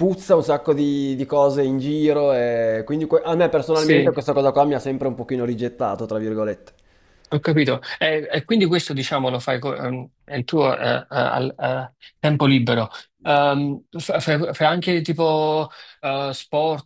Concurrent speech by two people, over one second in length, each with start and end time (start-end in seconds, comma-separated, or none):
none